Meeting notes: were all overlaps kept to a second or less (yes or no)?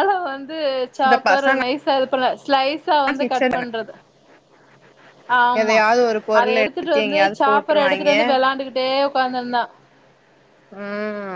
no